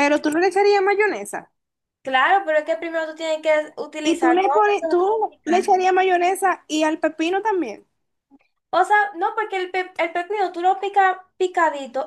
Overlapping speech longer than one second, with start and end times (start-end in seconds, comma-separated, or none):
4.0-5.8